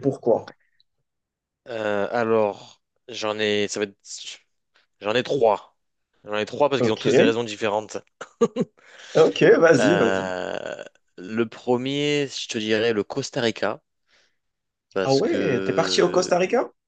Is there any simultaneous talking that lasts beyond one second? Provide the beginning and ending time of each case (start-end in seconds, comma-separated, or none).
15.0-16.3